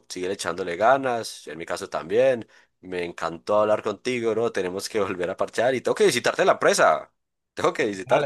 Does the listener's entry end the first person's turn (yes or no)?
yes